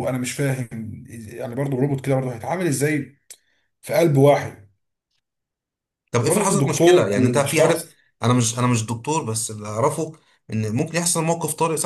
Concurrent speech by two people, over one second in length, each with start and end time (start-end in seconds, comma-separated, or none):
6.2-7.8